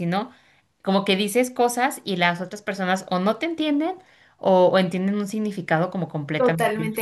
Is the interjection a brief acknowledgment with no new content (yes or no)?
no